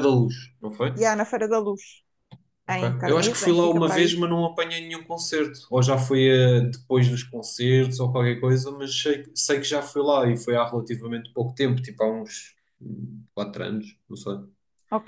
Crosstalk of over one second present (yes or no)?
yes